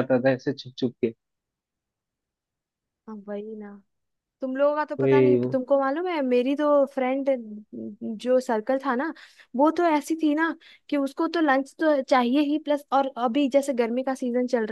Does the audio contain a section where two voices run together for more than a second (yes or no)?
no